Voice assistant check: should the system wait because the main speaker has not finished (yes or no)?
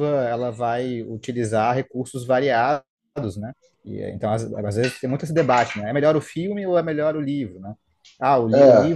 yes